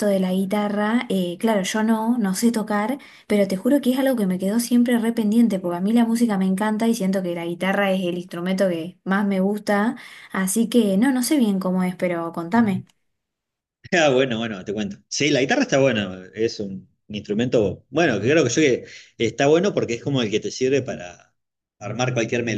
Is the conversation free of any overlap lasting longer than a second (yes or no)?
yes